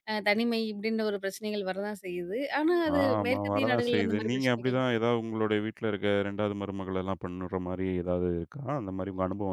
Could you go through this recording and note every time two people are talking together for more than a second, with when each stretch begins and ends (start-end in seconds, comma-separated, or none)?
3.0-4.8